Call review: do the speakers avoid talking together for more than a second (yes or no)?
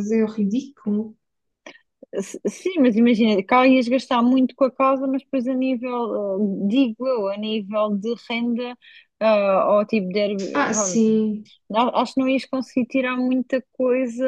yes